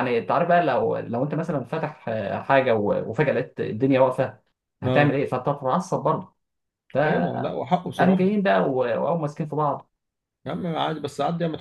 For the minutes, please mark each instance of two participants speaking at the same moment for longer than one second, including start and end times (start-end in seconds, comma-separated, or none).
7.0-8.3